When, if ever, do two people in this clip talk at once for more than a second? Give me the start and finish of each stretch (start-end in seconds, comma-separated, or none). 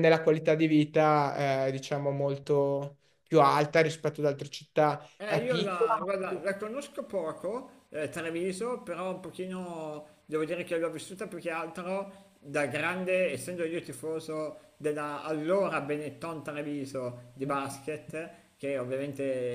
5.2-6.4